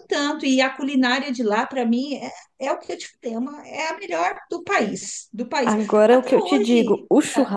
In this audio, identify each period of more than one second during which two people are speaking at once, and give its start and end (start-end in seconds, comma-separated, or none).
5.6-7.0